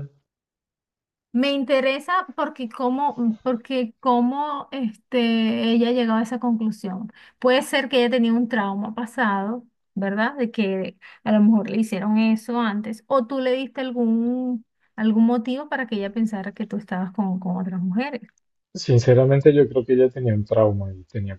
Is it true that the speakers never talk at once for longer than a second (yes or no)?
yes